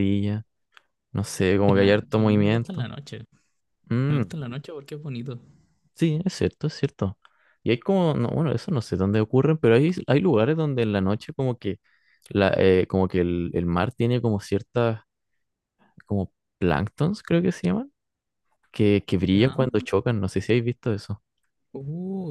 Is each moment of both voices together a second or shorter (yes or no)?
no